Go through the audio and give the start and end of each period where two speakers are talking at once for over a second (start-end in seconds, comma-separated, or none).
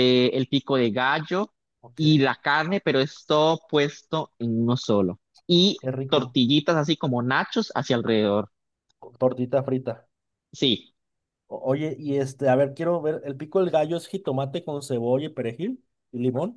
none